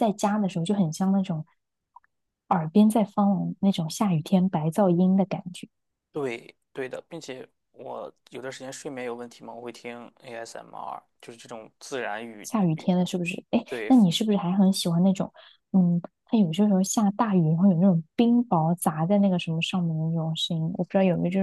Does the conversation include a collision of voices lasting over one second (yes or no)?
no